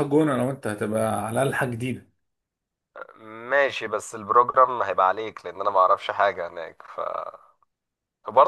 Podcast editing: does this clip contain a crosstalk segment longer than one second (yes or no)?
no